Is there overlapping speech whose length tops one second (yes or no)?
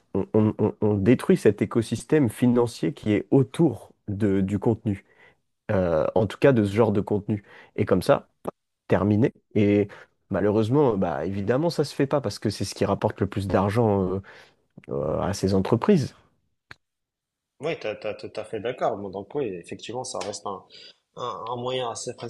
no